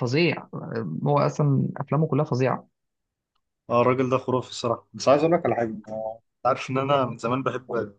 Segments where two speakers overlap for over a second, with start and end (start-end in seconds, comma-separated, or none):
none